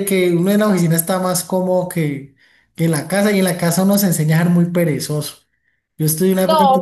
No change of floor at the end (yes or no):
yes